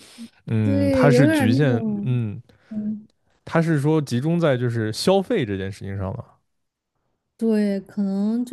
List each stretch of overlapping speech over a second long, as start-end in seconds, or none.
0.6-2.2